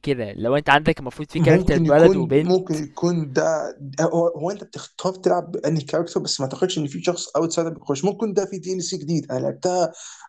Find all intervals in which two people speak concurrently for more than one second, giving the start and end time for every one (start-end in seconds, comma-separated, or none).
1.4-2.6